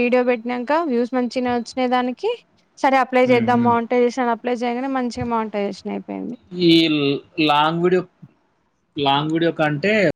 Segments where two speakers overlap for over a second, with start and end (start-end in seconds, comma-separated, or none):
none